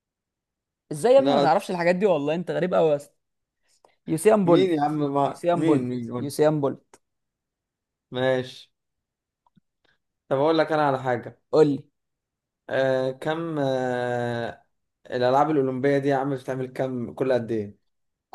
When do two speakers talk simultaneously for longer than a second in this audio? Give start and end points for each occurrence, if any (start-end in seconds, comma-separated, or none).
4.4-6.3